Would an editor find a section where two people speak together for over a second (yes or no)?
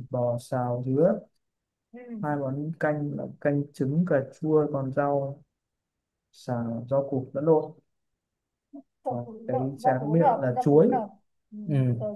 yes